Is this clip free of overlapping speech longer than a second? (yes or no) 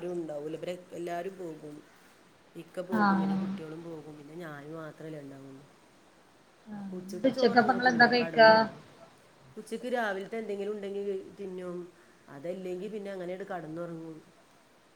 no